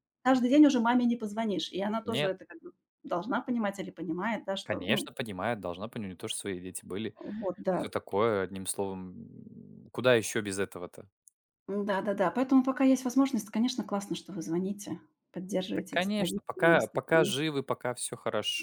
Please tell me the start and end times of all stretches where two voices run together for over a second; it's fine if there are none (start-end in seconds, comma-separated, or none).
15.7-17.3